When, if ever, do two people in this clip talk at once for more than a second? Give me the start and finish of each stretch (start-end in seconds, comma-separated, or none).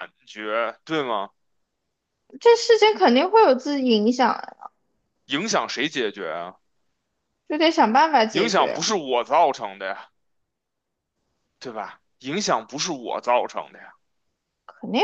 none